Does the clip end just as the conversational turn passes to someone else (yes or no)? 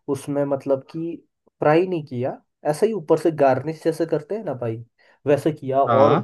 no